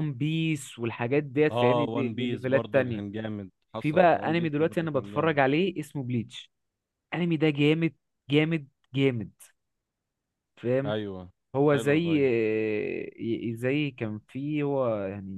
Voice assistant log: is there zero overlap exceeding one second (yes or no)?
no